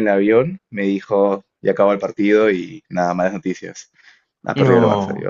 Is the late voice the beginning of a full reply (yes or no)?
no